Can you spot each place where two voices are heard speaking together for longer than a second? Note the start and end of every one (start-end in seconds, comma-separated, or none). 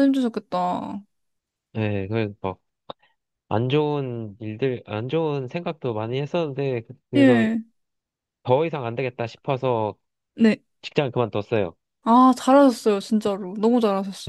none